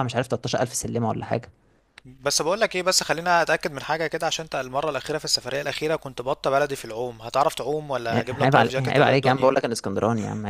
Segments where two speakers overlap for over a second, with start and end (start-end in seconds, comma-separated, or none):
8.1-9.5